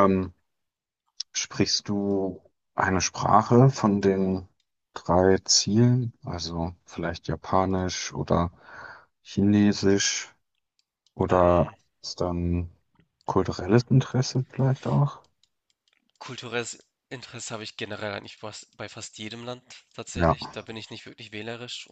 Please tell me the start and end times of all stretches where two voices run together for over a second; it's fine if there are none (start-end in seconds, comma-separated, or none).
none